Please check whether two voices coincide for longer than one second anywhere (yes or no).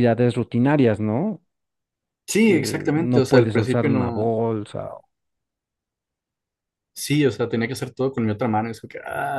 yes